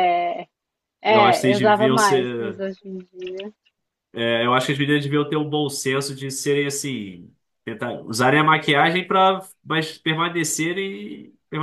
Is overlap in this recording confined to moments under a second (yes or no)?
no